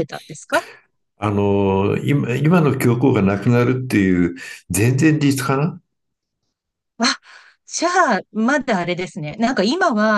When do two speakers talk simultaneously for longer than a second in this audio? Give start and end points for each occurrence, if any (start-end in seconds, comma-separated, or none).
none